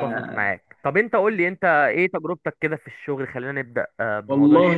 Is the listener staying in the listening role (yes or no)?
no